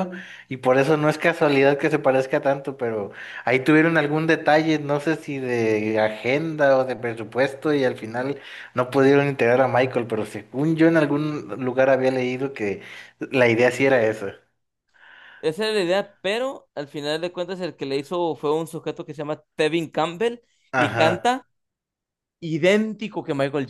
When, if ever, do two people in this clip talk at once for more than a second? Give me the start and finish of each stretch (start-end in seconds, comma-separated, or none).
none